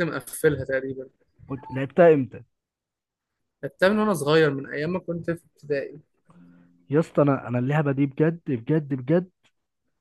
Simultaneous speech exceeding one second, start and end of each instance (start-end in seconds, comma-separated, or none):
none